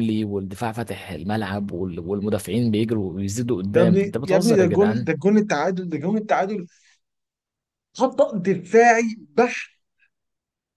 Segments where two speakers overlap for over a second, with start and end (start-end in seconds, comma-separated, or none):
3.7-5.1